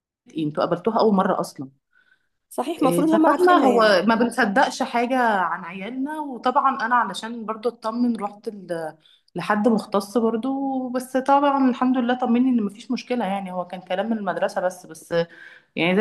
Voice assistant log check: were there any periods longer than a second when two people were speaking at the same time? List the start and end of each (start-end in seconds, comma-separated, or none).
2.8-4.0